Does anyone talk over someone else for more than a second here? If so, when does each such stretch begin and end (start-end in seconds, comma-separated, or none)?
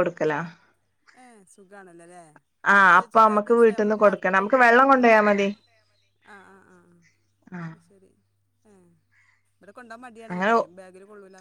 3.0-5.2